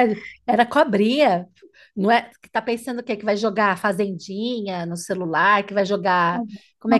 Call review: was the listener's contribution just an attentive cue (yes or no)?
yes